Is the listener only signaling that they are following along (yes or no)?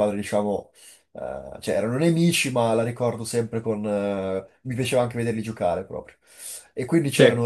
yes